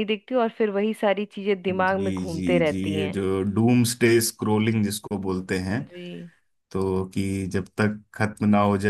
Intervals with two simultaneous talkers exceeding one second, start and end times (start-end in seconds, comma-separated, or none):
1.7-3.2